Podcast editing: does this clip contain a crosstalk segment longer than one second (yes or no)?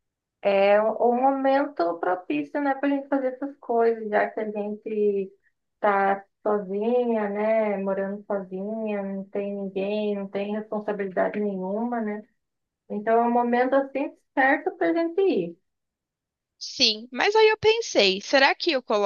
no